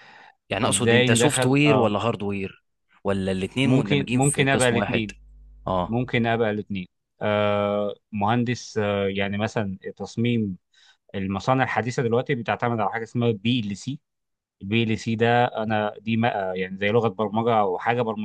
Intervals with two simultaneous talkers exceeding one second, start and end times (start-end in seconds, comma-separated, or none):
0.7-1.9, 3.6-5.1